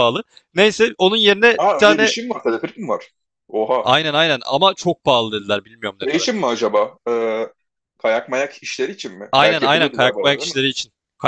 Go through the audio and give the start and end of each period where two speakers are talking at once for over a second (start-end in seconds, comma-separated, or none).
9.3-10.6